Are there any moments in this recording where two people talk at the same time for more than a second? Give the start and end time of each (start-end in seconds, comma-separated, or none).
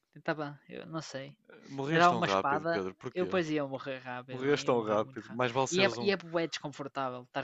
1.9-3.3, 4.3-6.1